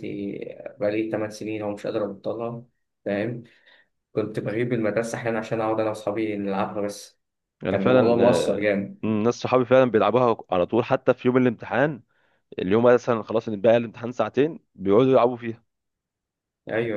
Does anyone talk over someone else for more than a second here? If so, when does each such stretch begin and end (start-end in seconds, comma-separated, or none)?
7.7-9.0